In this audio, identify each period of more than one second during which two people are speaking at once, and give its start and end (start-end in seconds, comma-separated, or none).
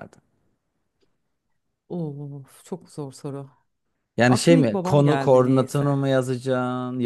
4.3-6.0